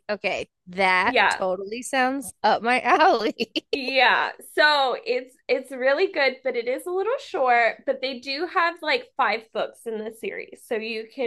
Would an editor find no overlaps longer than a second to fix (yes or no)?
yes